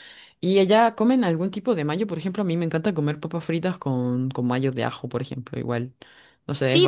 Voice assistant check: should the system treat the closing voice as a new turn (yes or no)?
yes